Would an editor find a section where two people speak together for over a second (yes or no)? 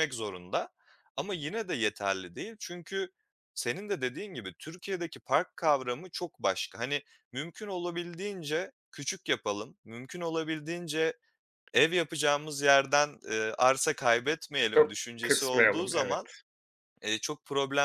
yes